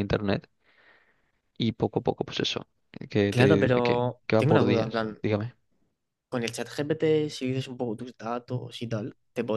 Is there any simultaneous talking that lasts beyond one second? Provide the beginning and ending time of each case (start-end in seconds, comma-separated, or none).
3.3-5.2